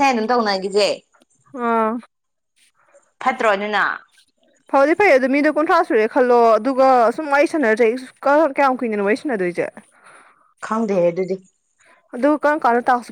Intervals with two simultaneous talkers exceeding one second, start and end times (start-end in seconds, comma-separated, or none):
none